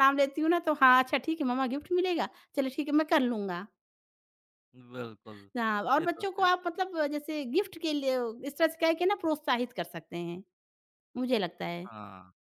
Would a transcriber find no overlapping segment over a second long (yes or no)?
yes